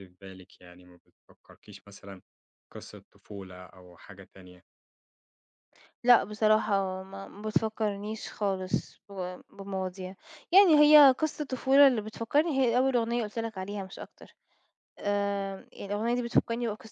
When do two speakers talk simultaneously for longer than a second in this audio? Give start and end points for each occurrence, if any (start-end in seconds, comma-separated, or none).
none